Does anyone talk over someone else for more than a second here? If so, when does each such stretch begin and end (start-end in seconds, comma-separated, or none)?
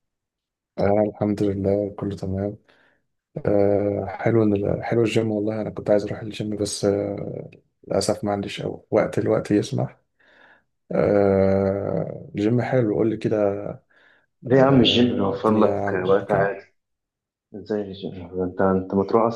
14.5-16.6